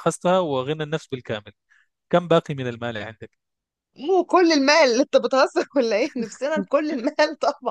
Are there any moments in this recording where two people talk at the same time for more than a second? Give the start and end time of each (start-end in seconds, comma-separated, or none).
none